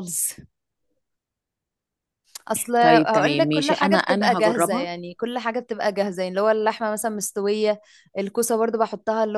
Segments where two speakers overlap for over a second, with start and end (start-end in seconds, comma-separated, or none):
2.8-4.9